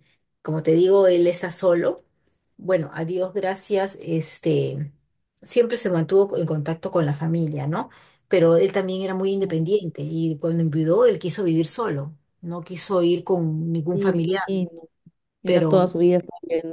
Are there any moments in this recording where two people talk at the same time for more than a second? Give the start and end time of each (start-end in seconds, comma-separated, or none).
none